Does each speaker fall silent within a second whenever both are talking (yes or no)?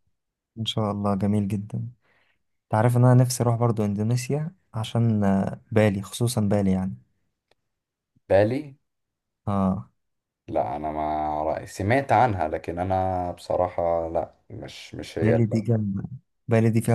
yes